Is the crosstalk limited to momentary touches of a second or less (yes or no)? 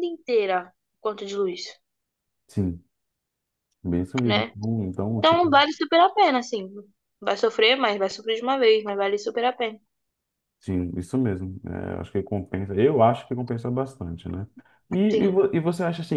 yes